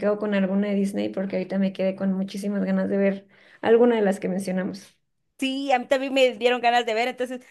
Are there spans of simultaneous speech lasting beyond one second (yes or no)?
no